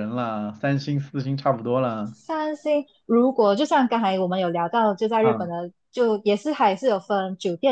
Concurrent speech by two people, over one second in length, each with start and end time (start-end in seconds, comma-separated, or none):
none